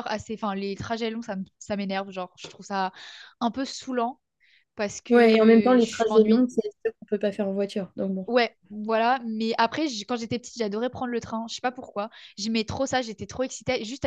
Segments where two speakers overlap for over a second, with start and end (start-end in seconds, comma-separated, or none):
5.1-6.5